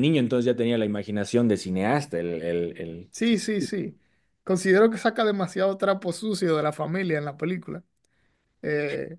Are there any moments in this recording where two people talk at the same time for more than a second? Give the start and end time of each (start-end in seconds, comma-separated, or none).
none